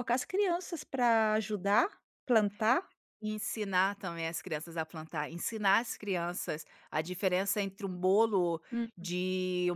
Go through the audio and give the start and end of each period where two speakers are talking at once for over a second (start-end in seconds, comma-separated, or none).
none